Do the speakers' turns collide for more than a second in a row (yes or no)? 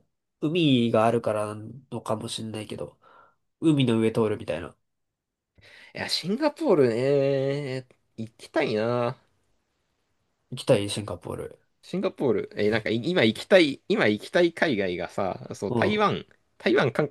no